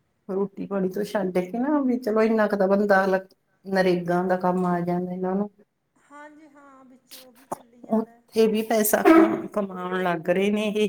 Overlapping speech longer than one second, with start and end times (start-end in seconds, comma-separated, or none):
none